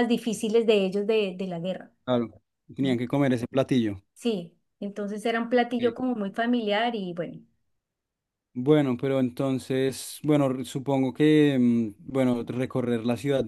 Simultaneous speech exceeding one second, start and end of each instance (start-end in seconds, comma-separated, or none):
none